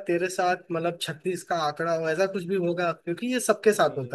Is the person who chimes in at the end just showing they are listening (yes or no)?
no